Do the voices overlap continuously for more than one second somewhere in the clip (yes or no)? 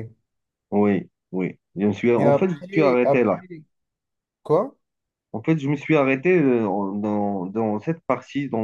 yes